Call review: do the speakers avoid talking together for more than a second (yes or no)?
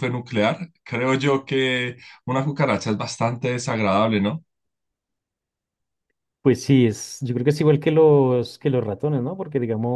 yes